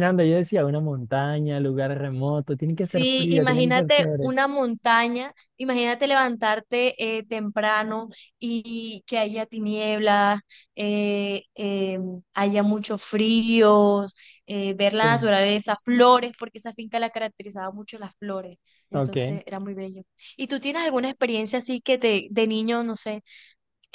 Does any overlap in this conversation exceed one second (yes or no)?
yes